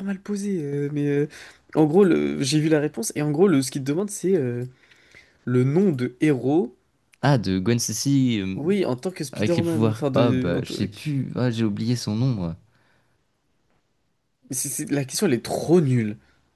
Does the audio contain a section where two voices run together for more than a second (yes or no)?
yes